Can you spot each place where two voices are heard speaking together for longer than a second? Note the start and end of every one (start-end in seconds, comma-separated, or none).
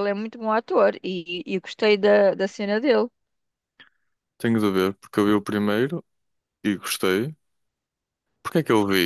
none